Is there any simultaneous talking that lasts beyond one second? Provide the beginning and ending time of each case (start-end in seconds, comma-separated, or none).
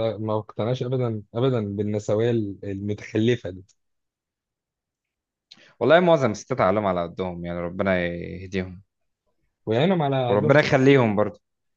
none